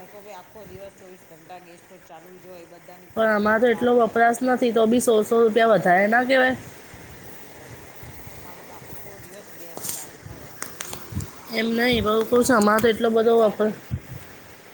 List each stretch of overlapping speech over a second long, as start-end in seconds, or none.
11.6-13.7